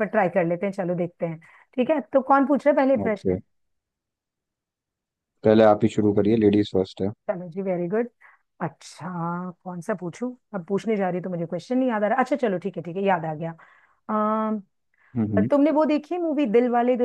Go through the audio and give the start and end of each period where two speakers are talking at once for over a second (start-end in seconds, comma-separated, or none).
none